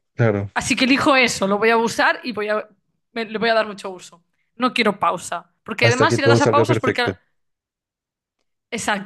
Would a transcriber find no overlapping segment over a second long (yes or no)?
no